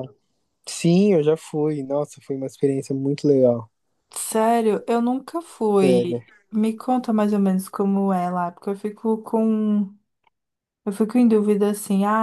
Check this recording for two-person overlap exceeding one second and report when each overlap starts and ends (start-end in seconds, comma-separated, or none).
none